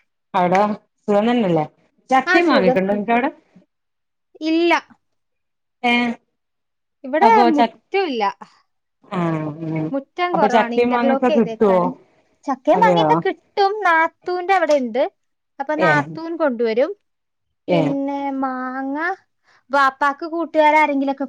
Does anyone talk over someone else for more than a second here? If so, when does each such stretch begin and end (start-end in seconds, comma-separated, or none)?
10.3-11.8